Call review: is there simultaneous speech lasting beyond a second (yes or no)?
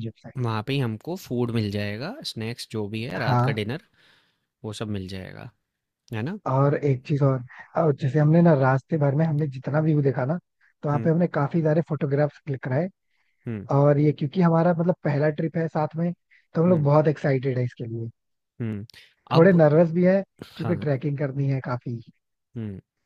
no